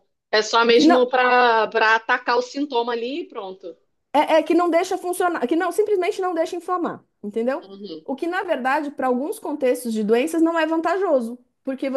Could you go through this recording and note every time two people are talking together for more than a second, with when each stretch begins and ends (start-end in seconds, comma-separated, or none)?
none